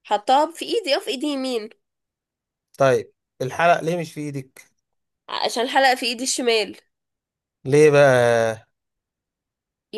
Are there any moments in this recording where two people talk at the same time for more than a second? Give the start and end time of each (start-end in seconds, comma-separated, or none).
none